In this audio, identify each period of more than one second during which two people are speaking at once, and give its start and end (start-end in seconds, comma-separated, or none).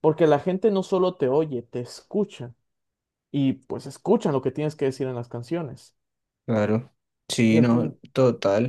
none